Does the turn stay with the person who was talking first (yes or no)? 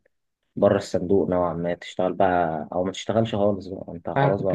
no